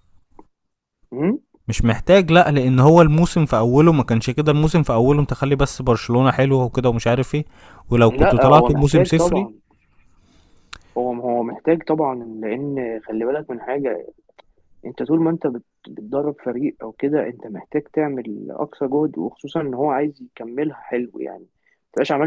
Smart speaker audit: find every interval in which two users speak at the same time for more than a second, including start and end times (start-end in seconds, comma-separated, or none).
8.1-9.5